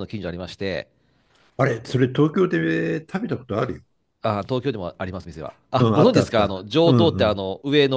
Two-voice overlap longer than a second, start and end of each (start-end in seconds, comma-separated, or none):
5.8-7.4